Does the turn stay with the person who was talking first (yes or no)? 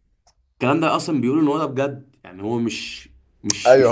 no